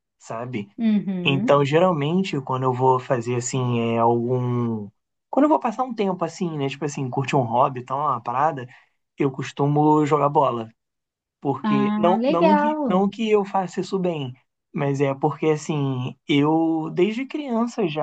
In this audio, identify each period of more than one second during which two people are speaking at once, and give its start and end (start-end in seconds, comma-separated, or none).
11.6-13.0